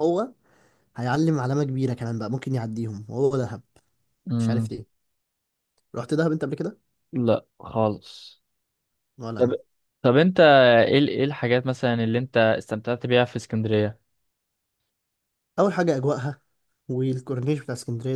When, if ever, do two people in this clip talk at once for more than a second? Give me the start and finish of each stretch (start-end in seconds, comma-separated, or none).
none